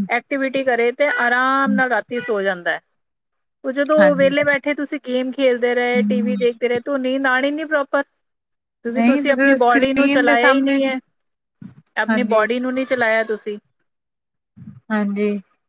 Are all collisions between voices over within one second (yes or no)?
no